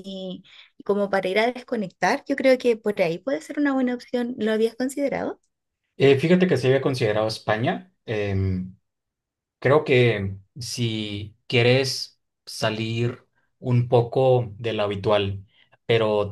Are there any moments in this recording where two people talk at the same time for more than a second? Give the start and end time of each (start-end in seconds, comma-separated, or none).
none